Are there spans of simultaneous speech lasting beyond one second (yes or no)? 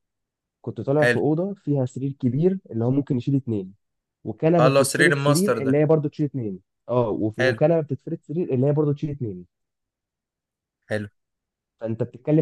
yes